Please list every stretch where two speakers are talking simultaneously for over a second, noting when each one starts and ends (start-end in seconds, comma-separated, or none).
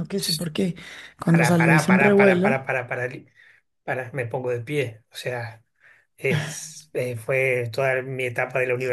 1.3-2.6